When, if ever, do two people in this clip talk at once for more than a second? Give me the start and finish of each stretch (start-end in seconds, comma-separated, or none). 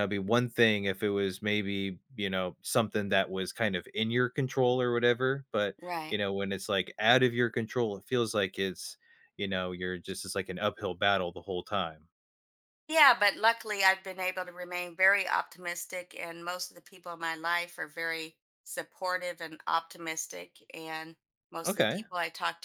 none